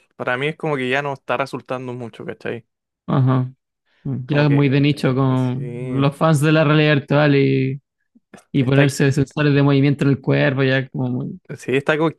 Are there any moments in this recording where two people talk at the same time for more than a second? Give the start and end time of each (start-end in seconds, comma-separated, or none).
4.2-6.1